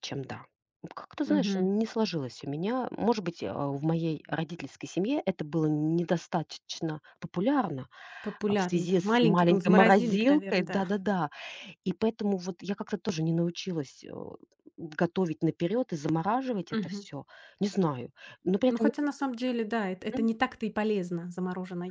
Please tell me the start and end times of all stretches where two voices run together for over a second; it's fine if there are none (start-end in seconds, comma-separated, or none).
8.5-10.9